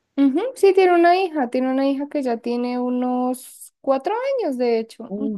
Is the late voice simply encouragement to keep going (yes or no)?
no